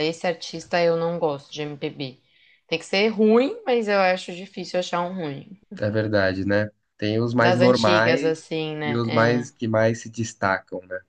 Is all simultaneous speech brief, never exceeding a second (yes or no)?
no